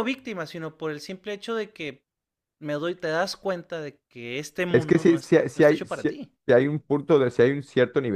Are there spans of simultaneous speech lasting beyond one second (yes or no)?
yes